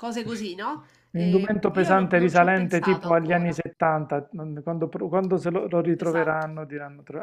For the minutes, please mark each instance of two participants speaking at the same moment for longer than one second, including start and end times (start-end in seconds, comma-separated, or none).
1.1-3.6